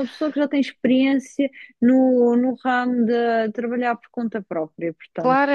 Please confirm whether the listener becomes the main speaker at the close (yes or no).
yes